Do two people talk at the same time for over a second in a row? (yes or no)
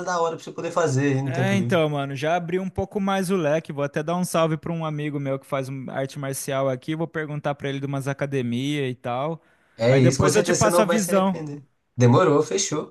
yes